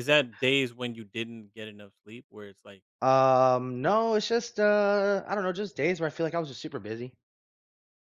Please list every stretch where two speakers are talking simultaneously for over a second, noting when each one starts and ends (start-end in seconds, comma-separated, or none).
none